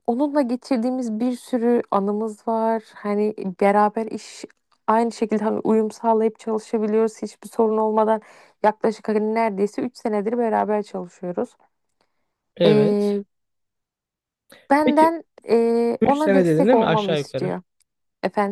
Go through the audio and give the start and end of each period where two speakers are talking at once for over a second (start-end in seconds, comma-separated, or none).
16.0-17.5